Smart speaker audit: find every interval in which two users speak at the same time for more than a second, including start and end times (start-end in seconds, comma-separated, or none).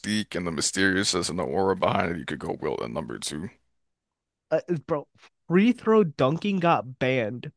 none